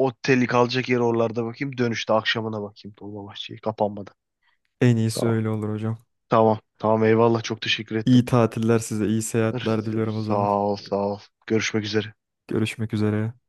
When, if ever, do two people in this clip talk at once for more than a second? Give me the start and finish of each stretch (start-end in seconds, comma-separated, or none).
none